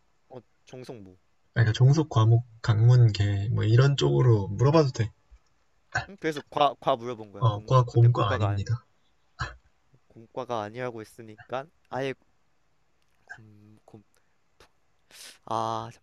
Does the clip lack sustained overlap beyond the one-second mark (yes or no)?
no